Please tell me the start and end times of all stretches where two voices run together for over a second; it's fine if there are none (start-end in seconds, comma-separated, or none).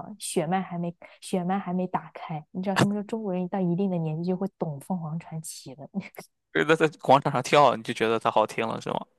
none